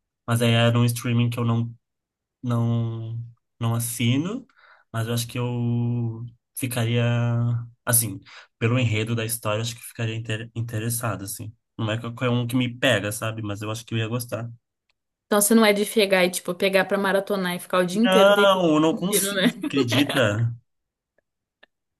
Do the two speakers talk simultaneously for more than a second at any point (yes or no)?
yes